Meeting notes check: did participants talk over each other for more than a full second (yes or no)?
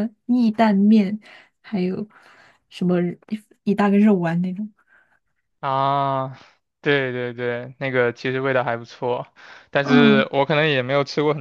no